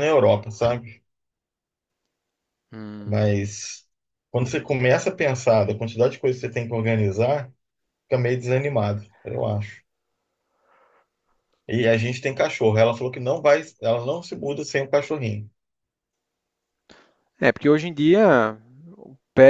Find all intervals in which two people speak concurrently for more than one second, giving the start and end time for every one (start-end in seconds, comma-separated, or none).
none